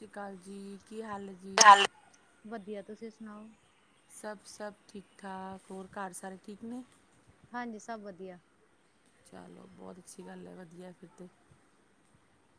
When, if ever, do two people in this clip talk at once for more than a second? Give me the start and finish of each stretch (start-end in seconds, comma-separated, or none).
none